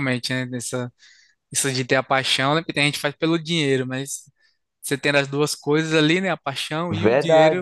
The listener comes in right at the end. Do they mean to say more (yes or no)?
yes